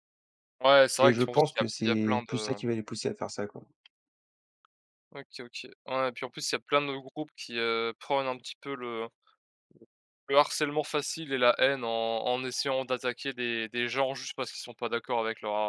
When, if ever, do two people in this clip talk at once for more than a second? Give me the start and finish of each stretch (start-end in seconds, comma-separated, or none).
1.0-2.6